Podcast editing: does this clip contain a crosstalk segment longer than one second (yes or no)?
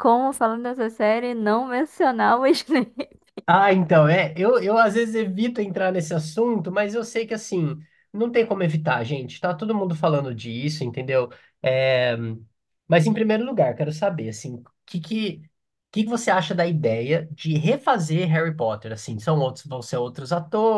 no